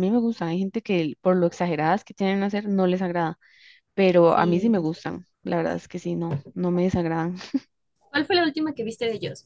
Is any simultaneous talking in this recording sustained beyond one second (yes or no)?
no